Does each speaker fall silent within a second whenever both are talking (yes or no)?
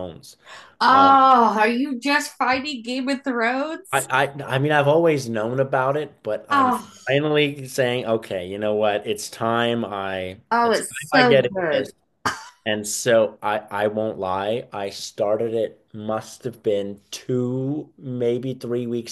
no